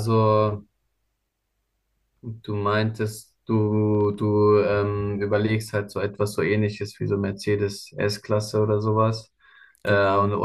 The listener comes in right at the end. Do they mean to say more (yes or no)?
no